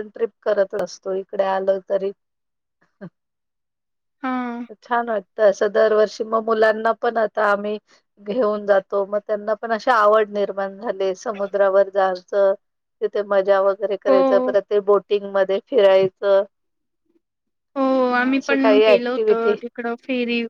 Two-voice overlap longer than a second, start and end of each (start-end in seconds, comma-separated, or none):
none